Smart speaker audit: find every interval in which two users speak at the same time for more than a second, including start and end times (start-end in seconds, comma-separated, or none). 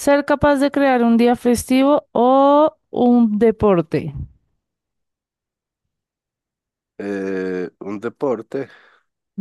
none